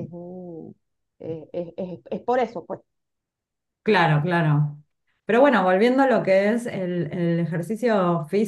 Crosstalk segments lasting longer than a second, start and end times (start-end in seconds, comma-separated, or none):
none